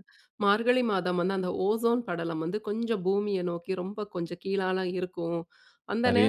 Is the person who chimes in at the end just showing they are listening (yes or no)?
yes